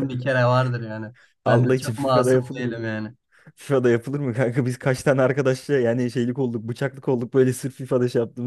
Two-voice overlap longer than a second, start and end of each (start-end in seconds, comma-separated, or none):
1.4-2.9